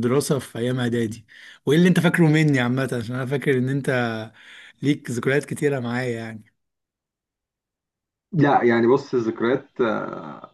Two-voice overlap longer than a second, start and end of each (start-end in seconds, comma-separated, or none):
none